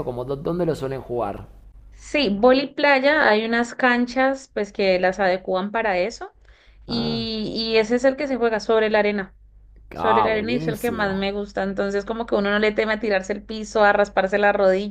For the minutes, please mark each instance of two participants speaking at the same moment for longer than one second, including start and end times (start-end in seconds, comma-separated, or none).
10.0-11.3